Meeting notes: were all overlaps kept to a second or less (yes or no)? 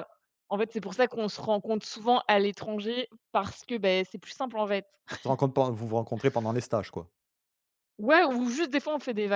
yes